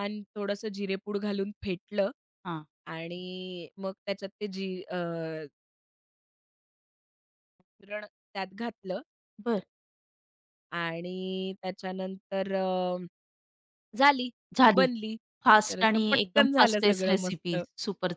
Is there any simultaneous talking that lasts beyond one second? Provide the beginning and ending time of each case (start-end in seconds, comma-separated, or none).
15.7-17.6